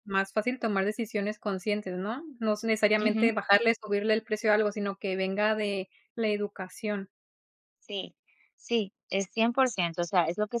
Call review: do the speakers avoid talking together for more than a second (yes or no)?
yes